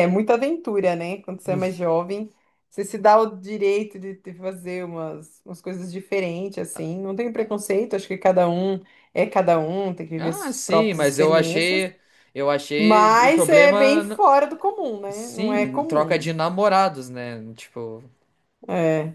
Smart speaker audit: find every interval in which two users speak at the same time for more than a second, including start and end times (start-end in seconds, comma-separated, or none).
10.2-11.8, 12.8-14.2, 15.1-16.3